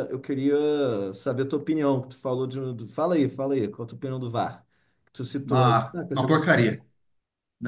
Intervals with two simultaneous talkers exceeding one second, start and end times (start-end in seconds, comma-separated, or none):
5.4-6.7